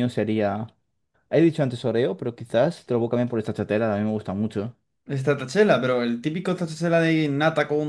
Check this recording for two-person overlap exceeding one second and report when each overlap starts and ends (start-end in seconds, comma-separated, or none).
none